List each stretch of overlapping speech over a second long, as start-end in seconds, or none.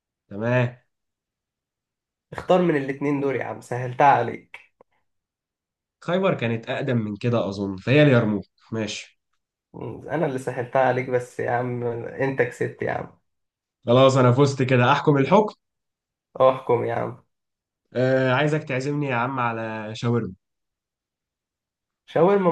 none